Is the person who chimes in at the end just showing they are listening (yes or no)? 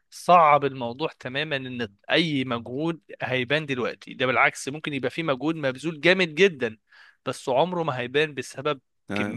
yes